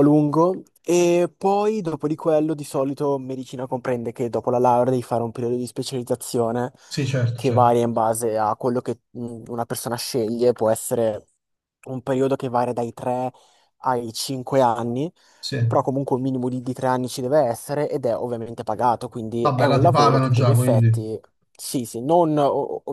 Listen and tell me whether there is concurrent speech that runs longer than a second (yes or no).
yes